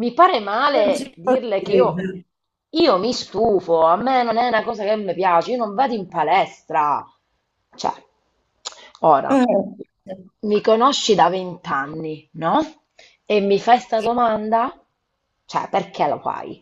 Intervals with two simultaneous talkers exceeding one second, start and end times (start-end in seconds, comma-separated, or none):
0.7-2.1